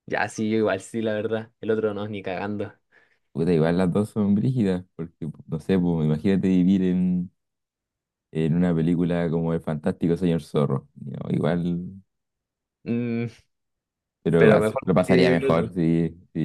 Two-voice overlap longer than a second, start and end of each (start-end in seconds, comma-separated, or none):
14.4-15.7